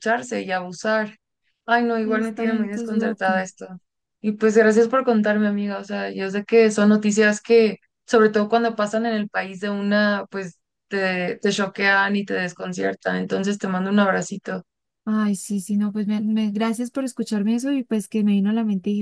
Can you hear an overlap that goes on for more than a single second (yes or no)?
yes